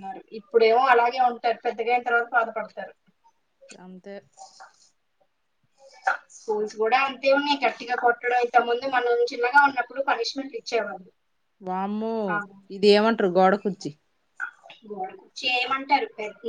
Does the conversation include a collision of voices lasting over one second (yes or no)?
no